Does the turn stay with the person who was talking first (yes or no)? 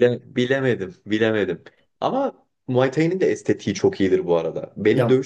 yes